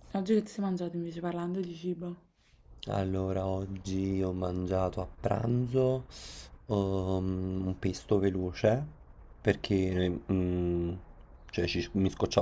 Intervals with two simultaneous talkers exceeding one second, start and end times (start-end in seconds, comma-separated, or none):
none